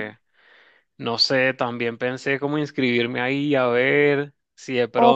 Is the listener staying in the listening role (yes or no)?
no